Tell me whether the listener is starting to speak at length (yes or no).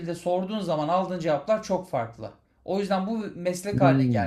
no